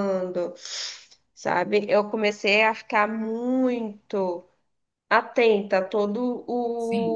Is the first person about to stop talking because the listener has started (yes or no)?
yes